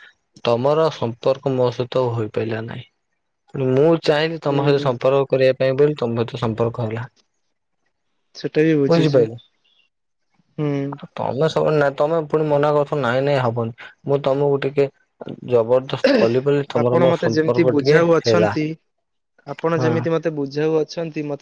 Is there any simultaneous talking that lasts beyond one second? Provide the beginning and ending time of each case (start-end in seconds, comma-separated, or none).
16.8-18.6